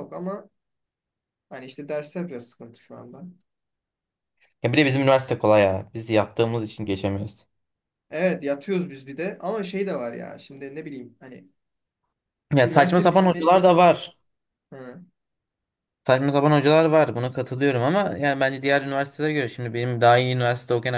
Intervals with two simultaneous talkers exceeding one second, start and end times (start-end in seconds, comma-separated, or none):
12.6-14.0